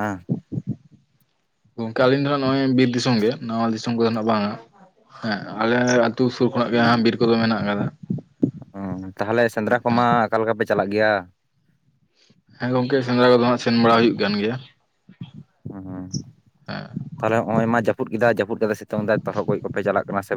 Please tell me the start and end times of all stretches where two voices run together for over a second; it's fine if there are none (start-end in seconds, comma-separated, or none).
none